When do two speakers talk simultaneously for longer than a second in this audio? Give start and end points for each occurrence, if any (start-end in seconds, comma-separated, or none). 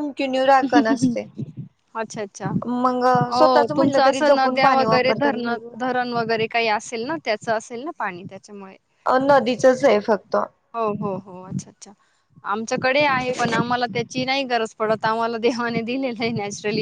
3.3-5.9